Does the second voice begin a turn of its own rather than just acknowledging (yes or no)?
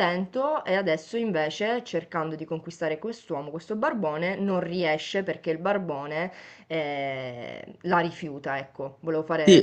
yes